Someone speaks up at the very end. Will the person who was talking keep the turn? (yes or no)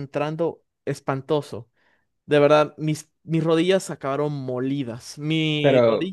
yes